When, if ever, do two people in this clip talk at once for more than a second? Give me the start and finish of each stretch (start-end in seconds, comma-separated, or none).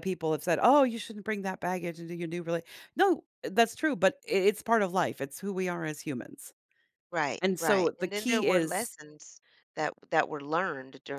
7.4-9.0